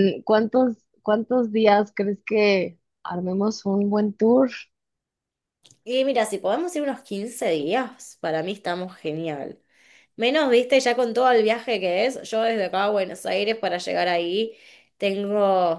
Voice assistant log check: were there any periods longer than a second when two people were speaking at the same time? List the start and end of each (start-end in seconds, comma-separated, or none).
none